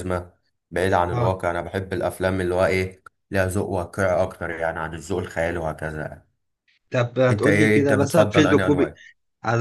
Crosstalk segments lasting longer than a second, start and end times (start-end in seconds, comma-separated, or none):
7.3-8.9